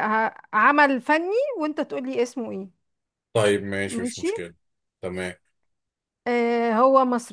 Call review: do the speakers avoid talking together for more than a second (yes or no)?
yes